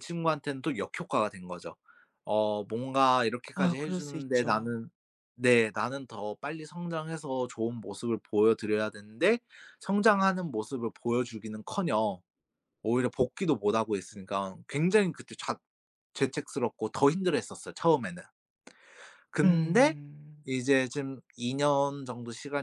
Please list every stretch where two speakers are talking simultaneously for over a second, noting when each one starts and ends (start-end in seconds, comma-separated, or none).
3.5-4.8